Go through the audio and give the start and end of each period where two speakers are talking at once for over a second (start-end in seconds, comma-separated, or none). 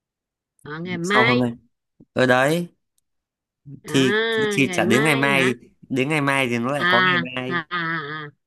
3.9-5.5